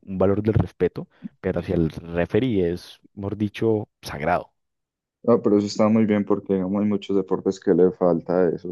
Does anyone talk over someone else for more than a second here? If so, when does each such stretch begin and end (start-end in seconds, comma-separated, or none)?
none